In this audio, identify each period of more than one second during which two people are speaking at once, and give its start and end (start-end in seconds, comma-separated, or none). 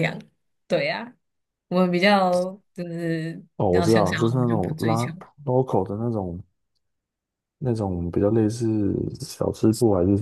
3.6-5.1